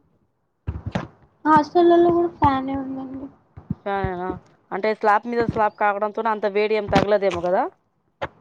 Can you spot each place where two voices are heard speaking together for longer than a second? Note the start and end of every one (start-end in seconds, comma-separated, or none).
none